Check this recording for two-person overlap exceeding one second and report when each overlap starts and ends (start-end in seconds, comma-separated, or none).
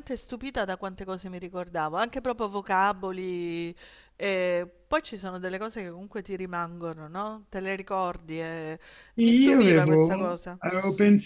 9.2-10.6